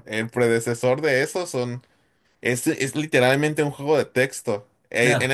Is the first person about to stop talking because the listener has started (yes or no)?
no